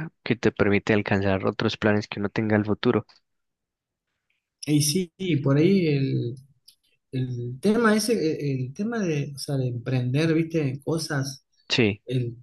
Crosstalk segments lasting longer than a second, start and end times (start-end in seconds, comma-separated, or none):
none